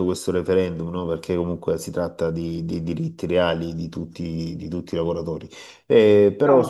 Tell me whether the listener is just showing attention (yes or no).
no